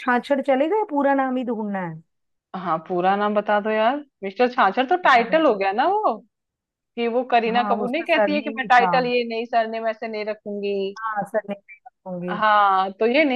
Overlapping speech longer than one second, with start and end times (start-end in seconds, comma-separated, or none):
7.5-8.9